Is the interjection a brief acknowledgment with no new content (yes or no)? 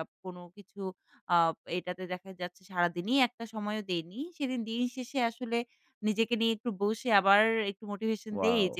yes